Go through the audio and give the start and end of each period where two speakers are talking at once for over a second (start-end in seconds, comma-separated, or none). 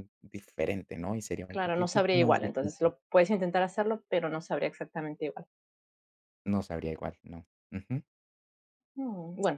1.5-2.9